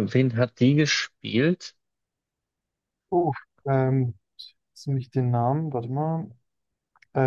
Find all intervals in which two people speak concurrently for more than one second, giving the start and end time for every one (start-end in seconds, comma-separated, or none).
none